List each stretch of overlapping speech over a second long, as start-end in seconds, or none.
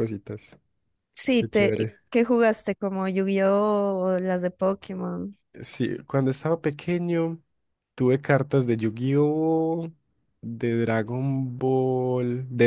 none